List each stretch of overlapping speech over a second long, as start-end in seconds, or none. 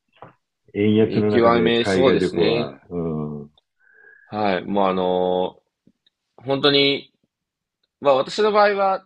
1.0-2.8